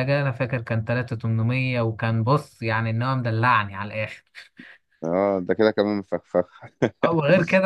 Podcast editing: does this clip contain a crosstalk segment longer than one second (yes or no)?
no